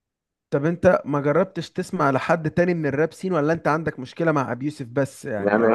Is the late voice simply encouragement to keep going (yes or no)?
no